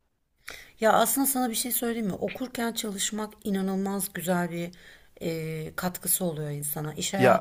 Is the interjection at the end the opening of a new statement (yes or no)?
no